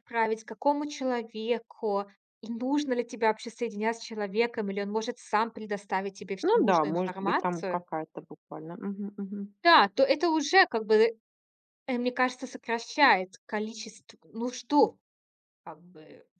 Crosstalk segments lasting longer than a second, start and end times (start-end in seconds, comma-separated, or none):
6.5-7.8